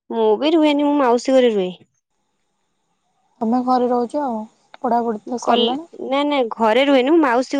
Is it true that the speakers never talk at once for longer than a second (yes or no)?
yes